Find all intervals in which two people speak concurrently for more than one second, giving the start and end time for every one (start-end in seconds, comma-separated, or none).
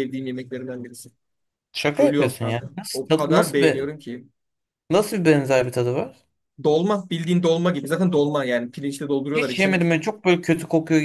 2.0-4.0